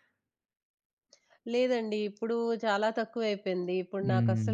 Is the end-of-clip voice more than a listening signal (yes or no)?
no